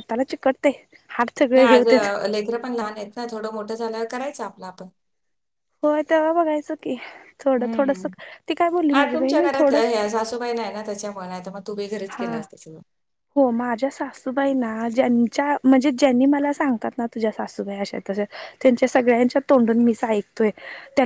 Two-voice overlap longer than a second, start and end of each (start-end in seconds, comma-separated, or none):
none